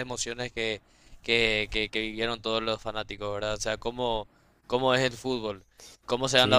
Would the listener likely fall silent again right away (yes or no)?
yes